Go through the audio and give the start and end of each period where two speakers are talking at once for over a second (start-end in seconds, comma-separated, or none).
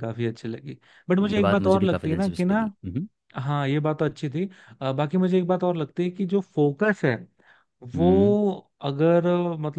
1.2-2.7